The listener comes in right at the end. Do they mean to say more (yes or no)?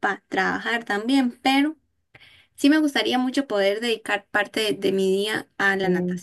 no